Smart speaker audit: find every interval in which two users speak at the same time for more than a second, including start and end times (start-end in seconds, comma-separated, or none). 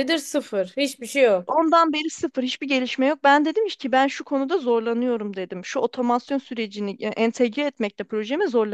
none